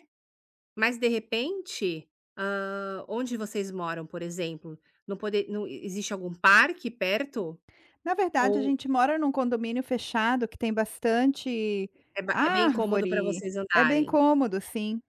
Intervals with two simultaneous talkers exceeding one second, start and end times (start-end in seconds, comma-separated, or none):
12.3-14.1